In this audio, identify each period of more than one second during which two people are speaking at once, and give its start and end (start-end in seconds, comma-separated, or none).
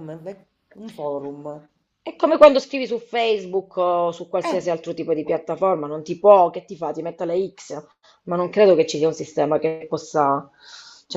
none